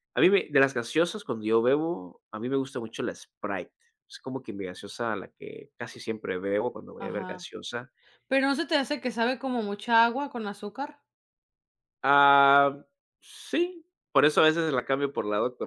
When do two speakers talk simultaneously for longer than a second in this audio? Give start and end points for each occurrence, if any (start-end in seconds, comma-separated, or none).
none